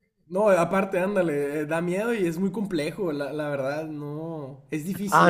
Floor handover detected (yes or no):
yes